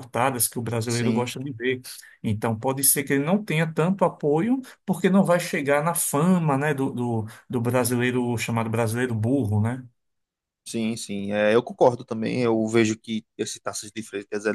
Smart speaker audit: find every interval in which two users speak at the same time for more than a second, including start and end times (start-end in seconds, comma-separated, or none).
none